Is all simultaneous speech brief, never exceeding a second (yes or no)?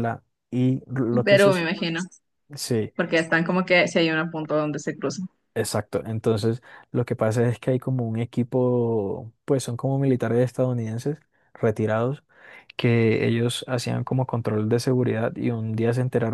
yes